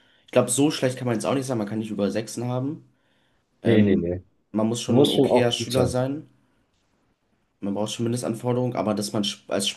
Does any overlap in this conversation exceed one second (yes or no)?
yes